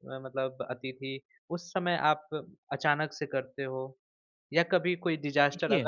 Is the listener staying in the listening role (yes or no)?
yes